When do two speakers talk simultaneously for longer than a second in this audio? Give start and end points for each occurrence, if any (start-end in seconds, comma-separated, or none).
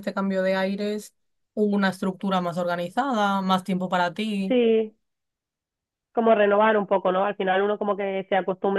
none